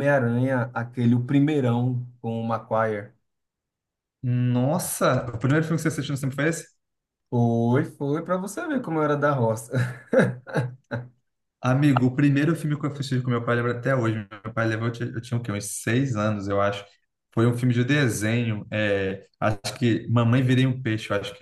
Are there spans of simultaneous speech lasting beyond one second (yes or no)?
no